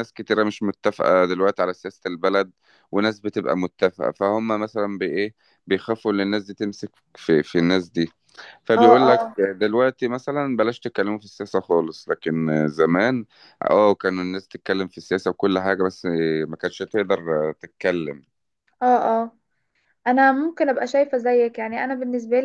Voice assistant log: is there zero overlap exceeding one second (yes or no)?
yes